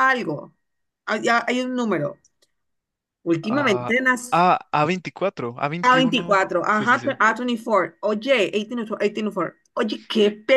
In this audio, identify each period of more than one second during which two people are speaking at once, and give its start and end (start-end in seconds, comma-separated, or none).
5.8-7.2